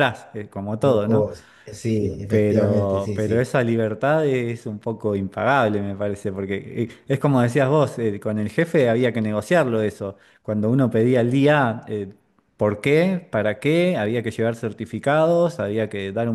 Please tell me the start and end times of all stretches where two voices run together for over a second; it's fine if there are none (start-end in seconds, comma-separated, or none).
2.3-3.5